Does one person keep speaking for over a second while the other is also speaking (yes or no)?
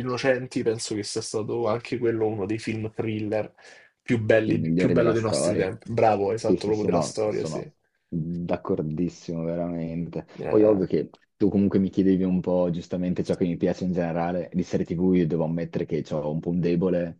yes